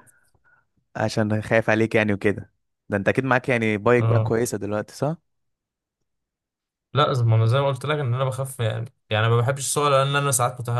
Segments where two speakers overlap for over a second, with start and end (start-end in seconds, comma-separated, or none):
none